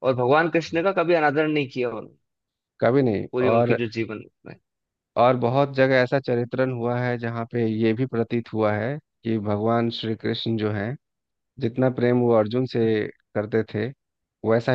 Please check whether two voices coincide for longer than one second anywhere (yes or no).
no